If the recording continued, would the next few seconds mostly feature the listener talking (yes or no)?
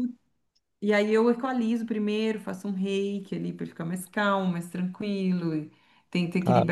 no